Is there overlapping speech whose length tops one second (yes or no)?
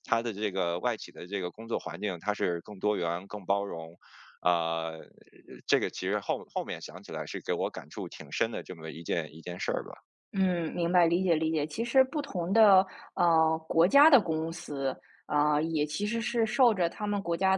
no